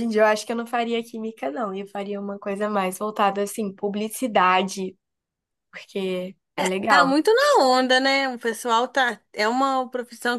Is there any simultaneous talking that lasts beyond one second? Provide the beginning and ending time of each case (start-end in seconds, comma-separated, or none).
none